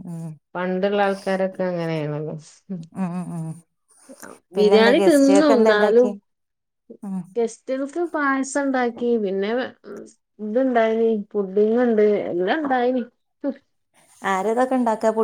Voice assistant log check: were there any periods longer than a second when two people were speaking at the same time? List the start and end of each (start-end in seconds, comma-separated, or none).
4.6-6.1